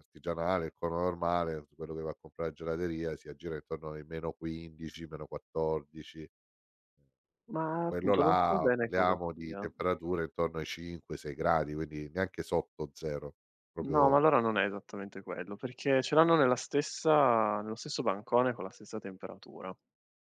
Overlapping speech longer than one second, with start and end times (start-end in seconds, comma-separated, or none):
7.8-9.7